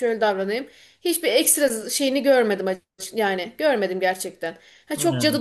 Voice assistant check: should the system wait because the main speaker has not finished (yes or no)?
yes